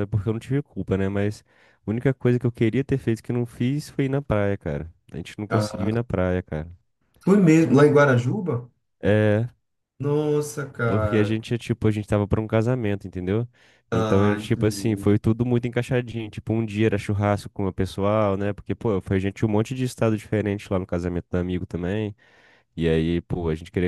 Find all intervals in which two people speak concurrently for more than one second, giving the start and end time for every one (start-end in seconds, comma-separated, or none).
13.9-15.1